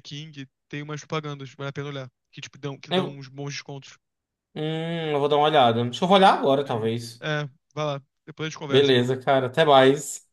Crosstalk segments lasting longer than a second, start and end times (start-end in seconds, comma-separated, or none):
none